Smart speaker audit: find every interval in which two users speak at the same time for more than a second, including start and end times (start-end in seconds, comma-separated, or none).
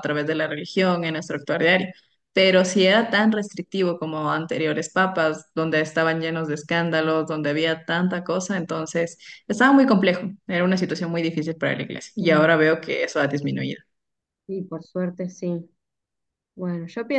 none